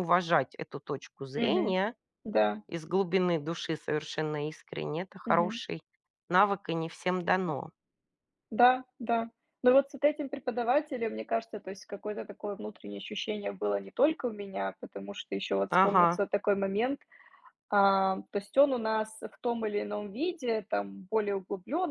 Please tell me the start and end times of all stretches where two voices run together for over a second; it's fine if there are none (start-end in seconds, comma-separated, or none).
none